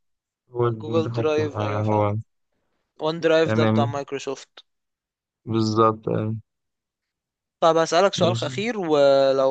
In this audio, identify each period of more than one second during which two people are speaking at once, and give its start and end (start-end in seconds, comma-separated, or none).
0.8-2.1